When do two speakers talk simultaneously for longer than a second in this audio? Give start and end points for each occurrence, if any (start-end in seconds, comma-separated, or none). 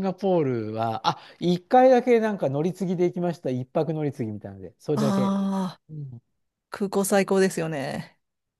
none